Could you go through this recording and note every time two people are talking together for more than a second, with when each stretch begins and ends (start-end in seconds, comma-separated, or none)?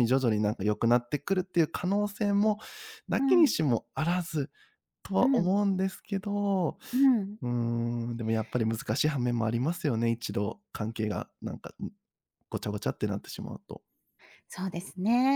none